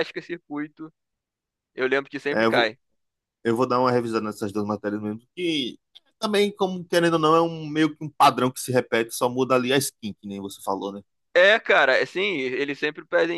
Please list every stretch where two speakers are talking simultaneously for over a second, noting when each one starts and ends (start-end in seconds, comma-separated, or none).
none